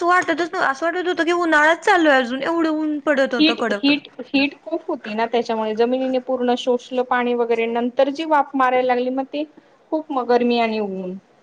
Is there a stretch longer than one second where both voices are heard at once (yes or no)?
no